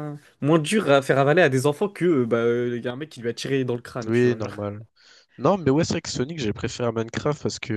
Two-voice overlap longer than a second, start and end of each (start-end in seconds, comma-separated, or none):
none